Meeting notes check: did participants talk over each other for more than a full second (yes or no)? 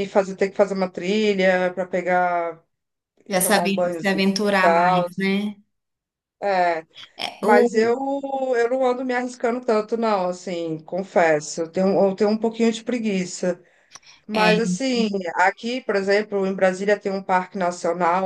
yes